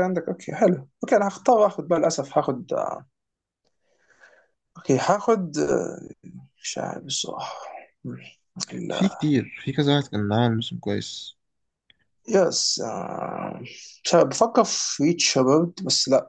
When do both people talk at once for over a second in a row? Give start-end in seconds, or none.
none